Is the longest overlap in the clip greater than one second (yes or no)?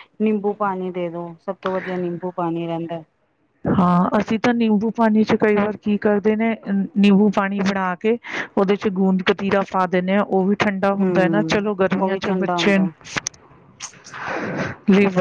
yes